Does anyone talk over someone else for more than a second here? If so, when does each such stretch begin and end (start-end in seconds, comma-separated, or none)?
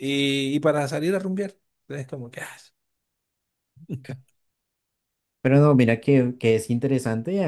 none